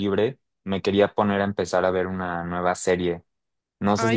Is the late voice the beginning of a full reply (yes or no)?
no